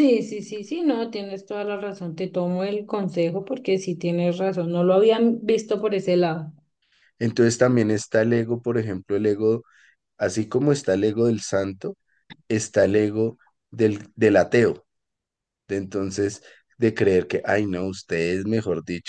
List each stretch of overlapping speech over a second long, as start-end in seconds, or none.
none